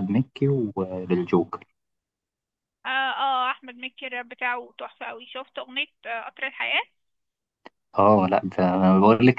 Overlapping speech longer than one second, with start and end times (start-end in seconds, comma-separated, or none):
none